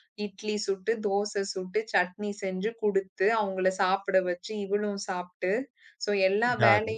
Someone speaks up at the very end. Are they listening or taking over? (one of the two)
listening